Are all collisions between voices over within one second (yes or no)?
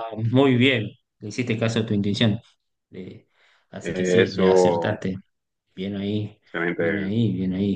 no